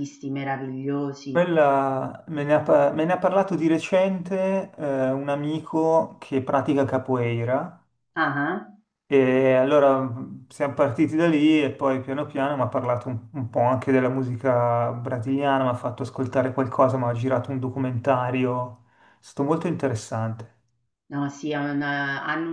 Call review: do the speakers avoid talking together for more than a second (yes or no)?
yes